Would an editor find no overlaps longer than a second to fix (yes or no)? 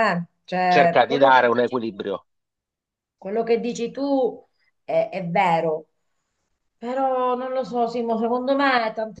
no